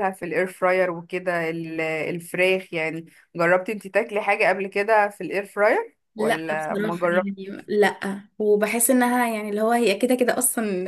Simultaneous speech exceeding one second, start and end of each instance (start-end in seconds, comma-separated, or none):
6.2-7.7